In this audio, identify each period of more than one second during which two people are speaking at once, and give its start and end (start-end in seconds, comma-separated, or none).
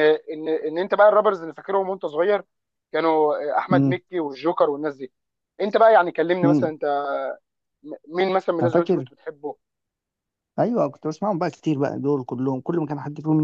none